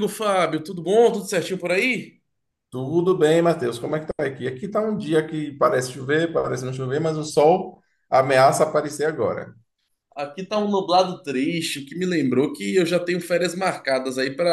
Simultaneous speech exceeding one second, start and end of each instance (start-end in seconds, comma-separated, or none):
none